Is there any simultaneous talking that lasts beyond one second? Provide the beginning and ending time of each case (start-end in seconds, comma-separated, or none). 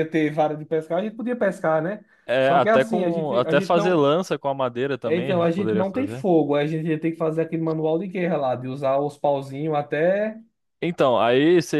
2.4-4.1, 5.0-6.2